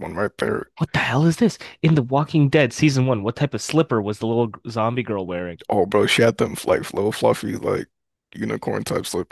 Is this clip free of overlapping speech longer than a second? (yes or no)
yes